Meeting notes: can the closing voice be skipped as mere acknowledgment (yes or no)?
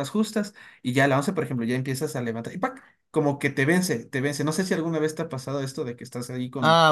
no